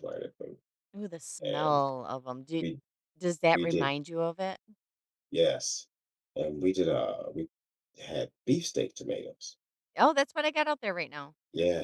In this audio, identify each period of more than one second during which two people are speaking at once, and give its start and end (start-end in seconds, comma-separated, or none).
none